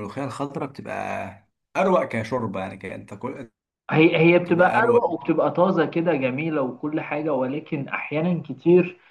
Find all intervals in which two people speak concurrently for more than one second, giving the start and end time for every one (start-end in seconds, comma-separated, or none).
none